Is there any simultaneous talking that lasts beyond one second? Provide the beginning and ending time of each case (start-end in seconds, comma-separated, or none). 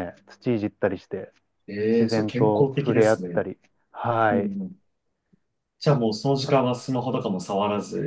1.9-3.4